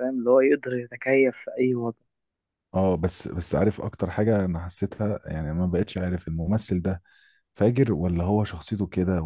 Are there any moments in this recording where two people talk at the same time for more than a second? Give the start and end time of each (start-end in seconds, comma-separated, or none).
none